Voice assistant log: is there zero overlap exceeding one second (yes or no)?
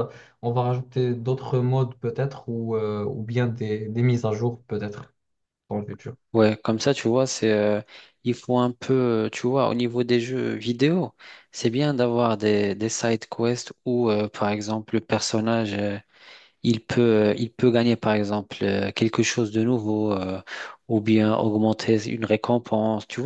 yes